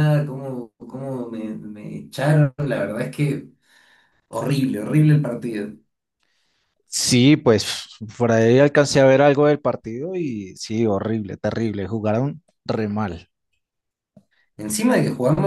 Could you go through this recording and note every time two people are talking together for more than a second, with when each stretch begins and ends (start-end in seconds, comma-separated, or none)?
none